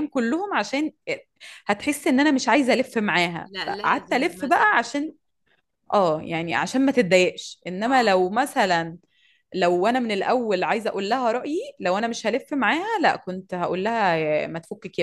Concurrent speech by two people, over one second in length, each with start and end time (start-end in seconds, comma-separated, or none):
3.5-4.9